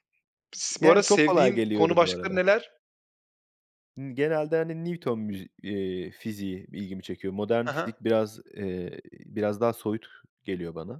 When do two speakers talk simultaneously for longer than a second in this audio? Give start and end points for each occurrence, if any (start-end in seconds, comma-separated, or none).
0.8-2.4